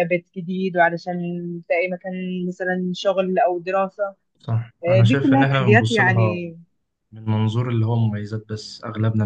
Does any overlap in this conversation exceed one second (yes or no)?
yes